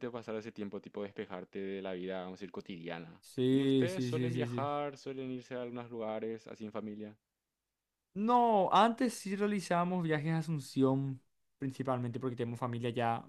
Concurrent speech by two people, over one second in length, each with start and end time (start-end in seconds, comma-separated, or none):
3.2-4.8